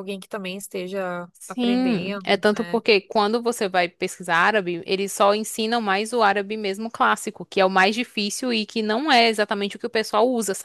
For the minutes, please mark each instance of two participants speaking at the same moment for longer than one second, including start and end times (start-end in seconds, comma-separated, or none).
1.3-2.8